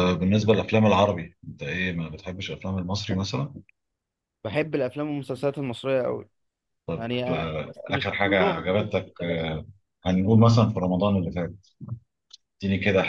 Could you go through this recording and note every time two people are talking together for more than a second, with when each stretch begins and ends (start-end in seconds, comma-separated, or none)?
7.0-9.5